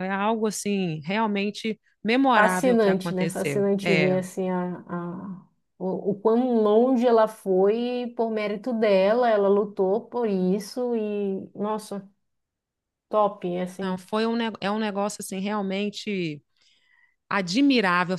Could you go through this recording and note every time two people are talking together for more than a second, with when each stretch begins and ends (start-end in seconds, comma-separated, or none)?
2.3-4.2